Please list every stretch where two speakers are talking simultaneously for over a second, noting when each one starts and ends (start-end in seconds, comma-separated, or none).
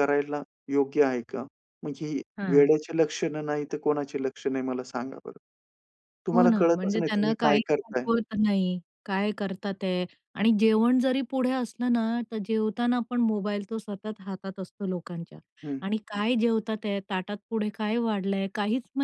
6.3-8.1